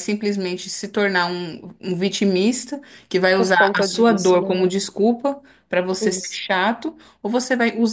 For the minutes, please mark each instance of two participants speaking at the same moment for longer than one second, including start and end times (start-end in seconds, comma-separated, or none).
3.4-4.6